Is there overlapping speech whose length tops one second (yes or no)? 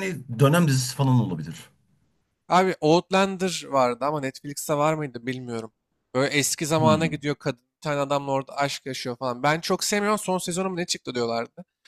no